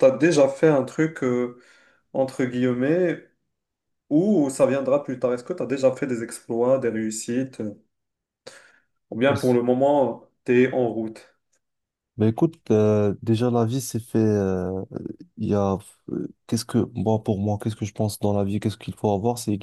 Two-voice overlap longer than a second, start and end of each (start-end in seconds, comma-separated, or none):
none